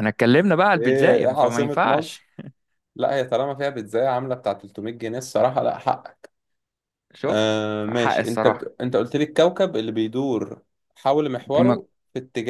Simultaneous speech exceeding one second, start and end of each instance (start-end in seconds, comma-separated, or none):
0.8-2.2, 7.3-8.7